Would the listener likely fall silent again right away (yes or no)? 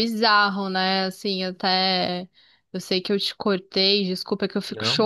yes